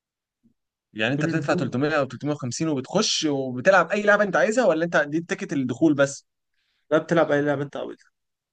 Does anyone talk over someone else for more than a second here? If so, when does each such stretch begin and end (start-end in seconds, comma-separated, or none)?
none